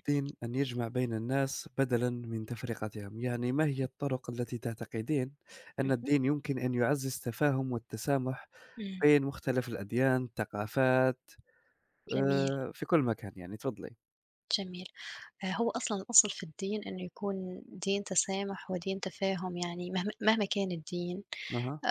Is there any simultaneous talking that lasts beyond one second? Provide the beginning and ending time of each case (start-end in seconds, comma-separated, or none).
none